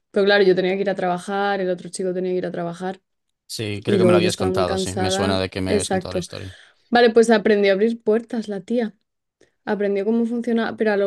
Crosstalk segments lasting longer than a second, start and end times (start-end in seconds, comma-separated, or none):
3.9-6.3